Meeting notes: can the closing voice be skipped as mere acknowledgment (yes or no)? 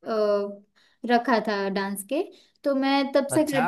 yes